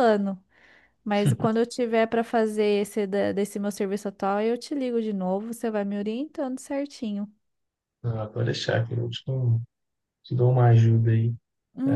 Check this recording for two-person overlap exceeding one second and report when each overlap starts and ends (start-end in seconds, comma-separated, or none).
none